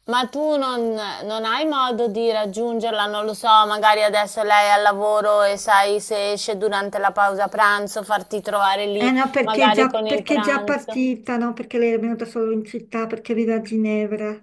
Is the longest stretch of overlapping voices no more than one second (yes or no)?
no